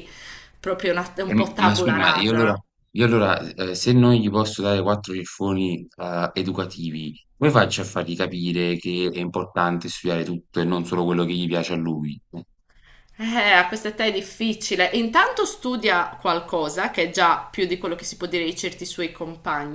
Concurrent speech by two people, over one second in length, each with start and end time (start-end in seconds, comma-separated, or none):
1.2-2.5